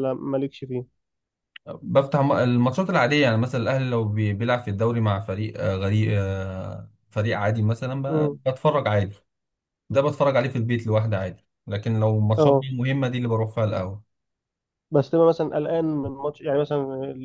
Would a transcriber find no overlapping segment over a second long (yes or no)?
yes